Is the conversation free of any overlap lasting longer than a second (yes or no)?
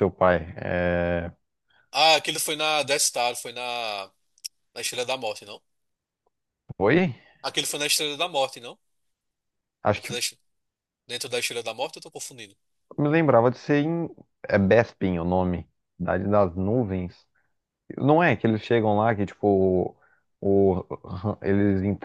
yes